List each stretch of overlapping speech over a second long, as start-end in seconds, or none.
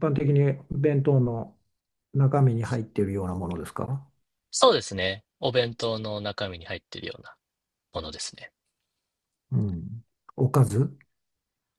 none